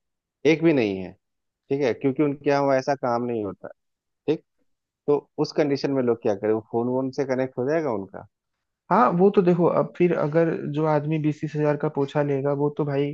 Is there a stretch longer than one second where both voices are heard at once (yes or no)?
no